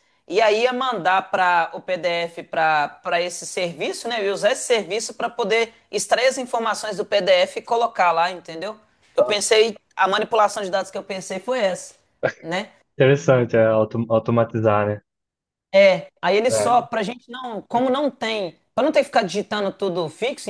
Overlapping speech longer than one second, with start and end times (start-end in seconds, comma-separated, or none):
none